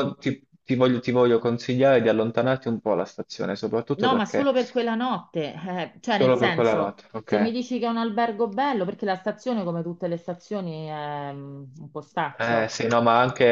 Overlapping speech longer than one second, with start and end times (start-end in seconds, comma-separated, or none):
6.0-7.5